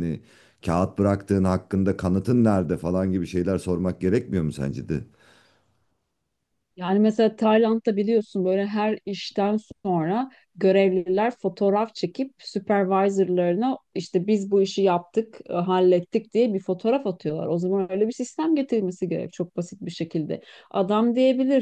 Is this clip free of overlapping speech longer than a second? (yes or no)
yes